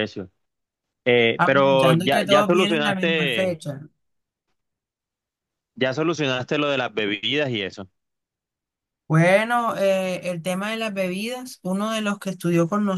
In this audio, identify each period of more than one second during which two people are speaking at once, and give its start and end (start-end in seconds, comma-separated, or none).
1.4-3.5